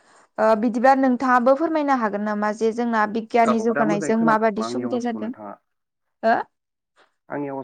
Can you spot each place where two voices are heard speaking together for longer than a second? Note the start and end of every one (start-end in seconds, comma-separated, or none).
3.5-5.3